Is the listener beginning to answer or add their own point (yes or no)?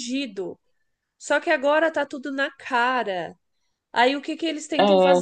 no